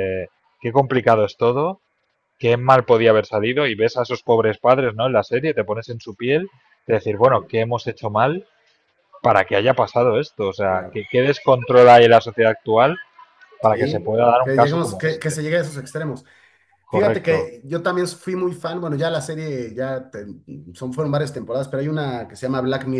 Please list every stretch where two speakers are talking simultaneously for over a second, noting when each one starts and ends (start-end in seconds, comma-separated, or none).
13.6-15.4